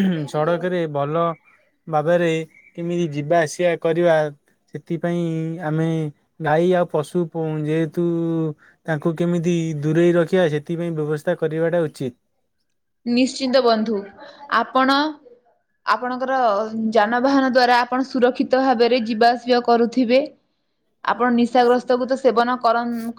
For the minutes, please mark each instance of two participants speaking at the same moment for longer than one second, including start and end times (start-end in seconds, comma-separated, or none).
none